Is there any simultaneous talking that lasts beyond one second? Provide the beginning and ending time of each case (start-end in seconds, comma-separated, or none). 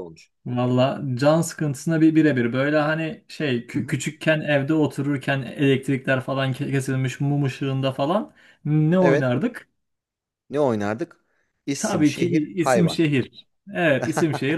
11.8-13.0